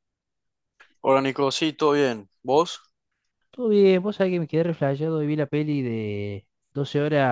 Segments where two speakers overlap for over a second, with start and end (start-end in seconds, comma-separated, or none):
none